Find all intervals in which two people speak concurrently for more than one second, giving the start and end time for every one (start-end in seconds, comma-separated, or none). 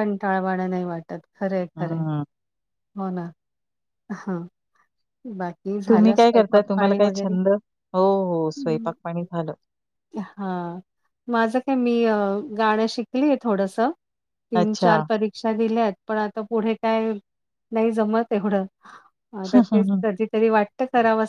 5.9-7.4